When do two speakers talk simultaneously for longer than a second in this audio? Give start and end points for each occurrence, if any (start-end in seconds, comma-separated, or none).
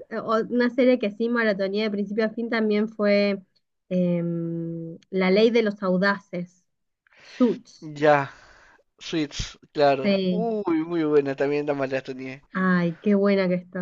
none